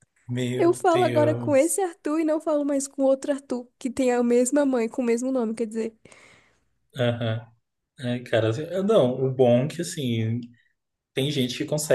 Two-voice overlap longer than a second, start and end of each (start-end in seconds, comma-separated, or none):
0.6-1.8